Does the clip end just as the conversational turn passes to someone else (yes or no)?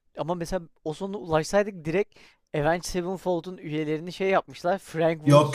yes